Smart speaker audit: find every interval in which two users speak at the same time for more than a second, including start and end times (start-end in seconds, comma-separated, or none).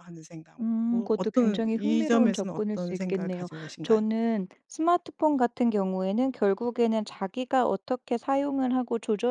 0.6-4.0